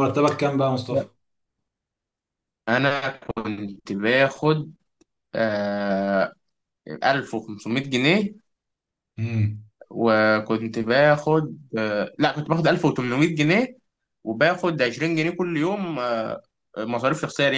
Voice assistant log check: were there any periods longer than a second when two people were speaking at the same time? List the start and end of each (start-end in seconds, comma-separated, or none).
none